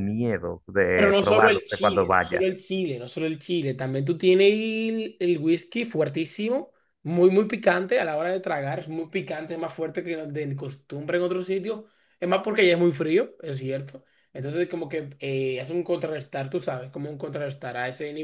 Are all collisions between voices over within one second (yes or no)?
no